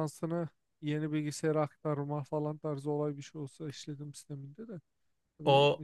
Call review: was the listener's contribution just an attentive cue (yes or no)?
no